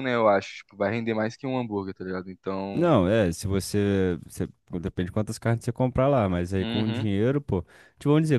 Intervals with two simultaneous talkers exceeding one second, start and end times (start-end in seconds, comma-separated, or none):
none